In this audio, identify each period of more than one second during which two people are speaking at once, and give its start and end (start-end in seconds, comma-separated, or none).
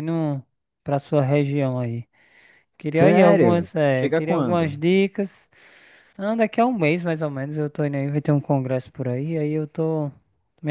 2.9-4.8